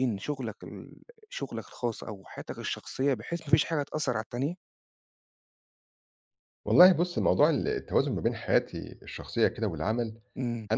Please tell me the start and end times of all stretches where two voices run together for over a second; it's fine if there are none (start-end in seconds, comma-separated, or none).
none